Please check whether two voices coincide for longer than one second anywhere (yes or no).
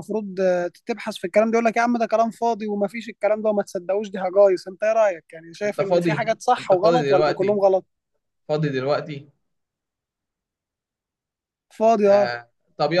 yes